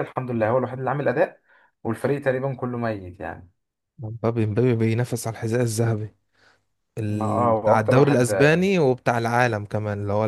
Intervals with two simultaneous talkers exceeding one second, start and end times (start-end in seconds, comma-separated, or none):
7.1-8.3